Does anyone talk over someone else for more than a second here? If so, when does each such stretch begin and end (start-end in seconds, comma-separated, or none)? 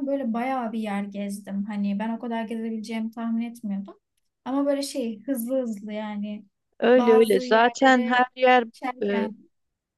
6.9-8.2